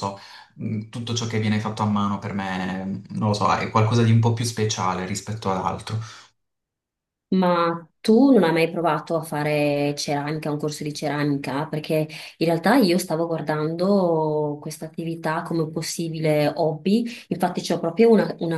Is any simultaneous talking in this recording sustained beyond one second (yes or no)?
no